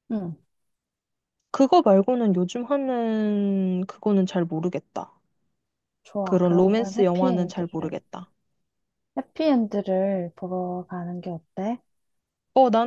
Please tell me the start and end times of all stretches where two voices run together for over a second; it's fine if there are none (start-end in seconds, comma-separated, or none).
6.2-8.0